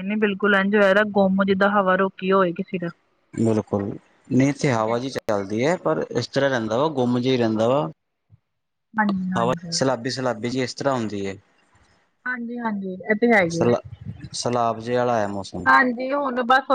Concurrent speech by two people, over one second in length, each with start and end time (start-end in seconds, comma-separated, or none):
none